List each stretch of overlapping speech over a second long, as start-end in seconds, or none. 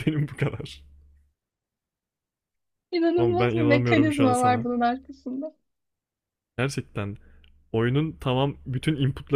3.2-4.7